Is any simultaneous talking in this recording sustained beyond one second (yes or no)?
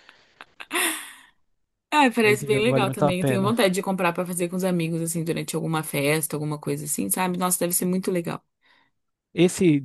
yes